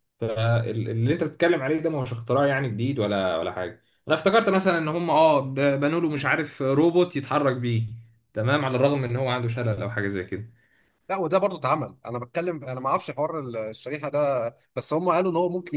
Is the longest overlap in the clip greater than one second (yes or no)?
no